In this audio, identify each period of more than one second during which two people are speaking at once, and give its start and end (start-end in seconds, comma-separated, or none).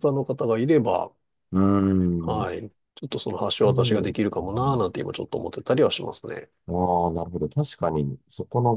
3.4-4.8